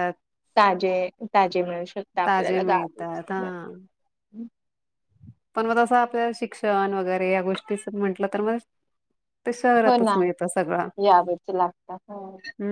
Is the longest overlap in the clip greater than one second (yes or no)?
yes